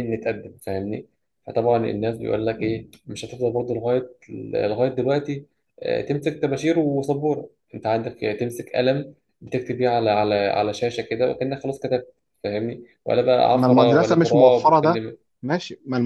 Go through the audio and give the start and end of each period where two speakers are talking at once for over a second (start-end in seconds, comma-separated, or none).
13.5-15.0